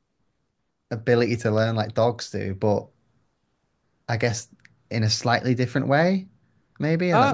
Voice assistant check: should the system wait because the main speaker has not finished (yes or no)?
no